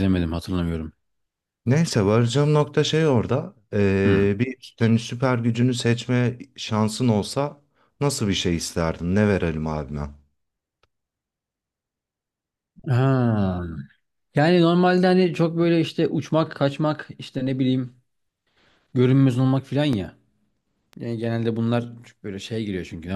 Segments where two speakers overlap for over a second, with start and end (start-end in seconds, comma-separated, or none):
none